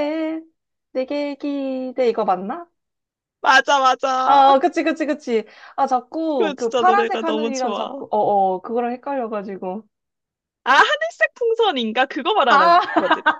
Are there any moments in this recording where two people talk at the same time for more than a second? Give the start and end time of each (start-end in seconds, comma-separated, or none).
6.4-8.0